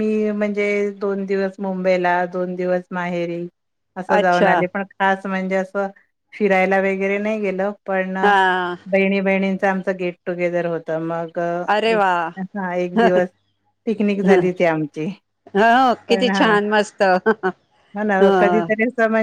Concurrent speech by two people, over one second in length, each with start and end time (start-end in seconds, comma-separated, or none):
none